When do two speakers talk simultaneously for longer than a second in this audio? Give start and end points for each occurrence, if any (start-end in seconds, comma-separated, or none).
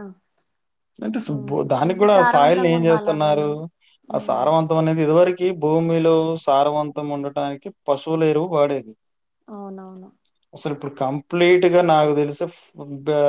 1.4-3.5